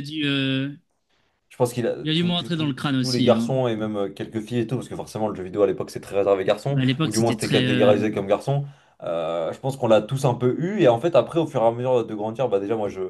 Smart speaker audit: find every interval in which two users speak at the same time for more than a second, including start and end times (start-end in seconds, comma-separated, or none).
2.0-3.5, 6.7-8.0